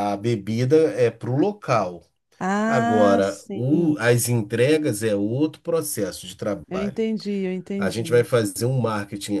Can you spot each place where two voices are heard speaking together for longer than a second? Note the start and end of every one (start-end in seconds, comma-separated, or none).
2.6-4.0